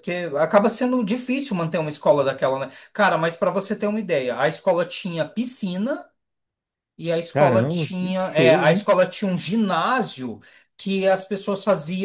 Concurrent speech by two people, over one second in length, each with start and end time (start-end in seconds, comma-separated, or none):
7.3-8.9